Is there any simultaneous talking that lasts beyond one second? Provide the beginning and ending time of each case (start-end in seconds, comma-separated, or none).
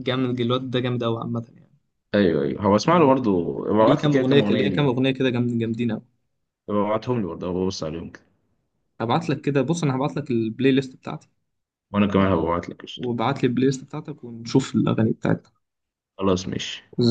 3.8-5.0